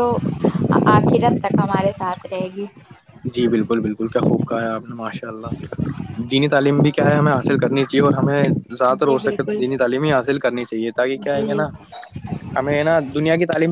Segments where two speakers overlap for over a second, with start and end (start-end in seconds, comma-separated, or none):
none